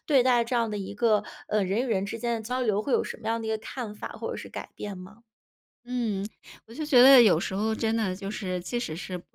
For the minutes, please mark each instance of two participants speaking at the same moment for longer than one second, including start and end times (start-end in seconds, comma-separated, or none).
none